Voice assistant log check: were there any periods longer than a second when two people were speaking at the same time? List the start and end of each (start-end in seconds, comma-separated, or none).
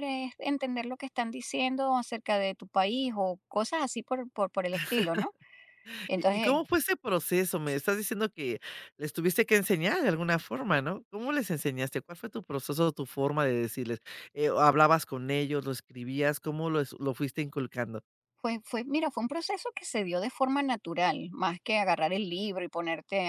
none